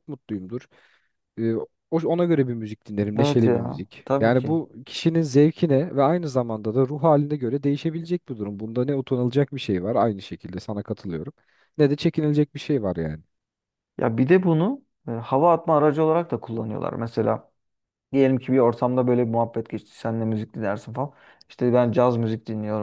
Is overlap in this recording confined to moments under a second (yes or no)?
no